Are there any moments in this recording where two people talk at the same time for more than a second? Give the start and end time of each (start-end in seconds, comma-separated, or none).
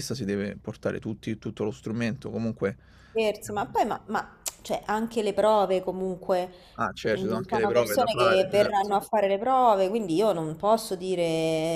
7.2-8.9